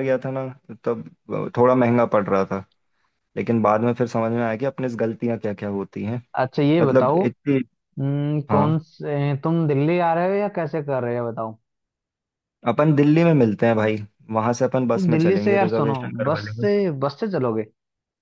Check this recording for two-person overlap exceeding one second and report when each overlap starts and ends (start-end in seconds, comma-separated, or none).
14.9-16.7